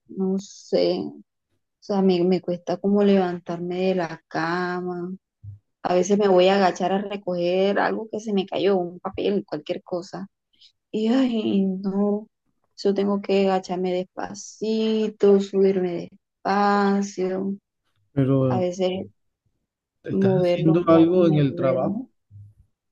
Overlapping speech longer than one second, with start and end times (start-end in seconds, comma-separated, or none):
20.1-22.0